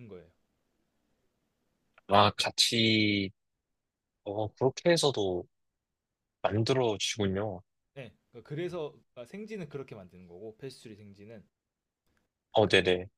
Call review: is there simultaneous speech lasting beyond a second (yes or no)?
no